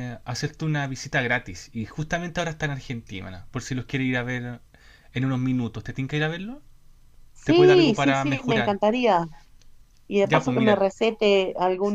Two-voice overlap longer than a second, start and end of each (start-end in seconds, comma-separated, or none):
7.4-8.8